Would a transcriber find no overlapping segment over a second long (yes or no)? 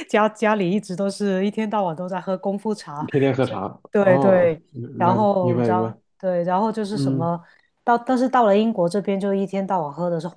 no